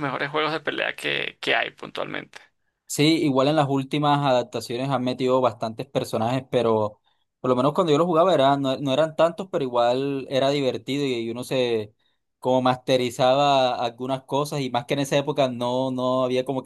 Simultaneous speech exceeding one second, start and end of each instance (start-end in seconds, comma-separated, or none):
none